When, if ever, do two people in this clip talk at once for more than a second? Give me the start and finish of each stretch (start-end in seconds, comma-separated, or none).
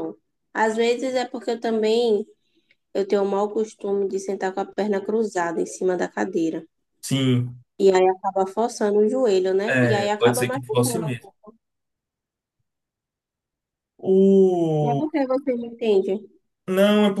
9.7-11.2